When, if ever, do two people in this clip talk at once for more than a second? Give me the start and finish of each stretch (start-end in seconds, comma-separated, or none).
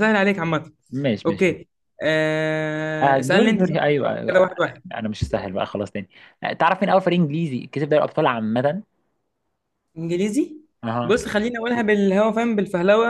3.0-4.5